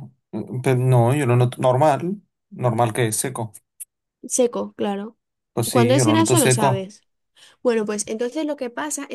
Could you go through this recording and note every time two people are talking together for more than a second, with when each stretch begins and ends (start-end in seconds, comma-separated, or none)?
5.7-6.9